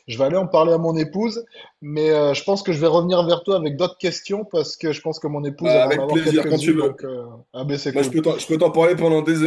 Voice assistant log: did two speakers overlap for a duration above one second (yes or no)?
yes